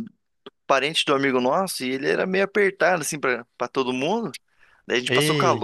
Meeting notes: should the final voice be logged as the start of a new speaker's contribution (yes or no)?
no